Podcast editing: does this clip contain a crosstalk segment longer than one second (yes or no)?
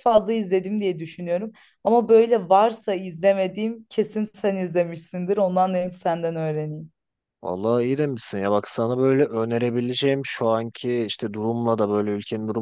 no